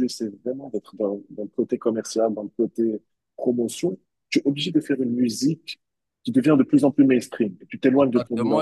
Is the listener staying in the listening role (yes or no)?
no